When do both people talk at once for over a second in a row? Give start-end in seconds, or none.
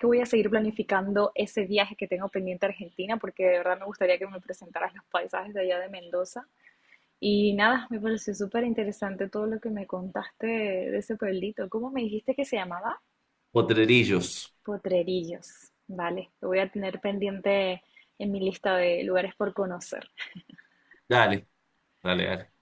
none